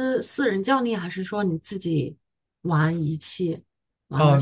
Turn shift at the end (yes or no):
yes